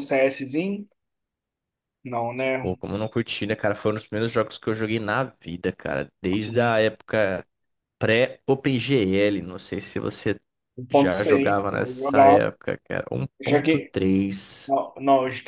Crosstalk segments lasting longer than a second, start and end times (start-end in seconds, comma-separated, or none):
10.9-12.4